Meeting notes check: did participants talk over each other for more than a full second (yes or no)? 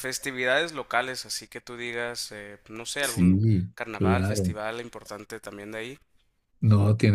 yes